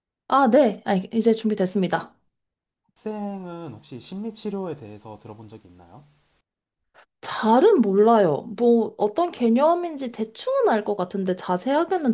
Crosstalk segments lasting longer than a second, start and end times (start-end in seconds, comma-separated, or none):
none